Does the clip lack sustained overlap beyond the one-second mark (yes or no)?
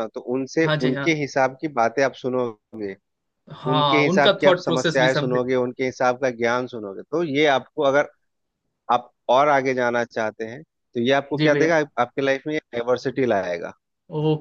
no